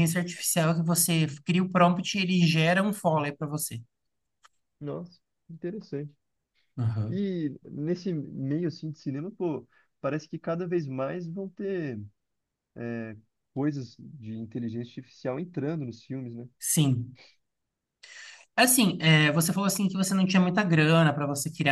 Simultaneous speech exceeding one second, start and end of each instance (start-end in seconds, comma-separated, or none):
none